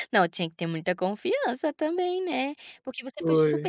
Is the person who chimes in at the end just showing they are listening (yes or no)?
yes